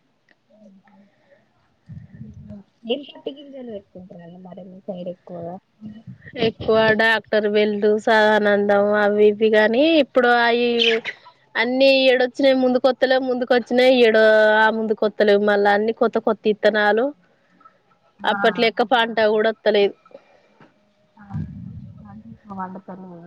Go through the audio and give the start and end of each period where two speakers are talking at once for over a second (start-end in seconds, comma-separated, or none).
none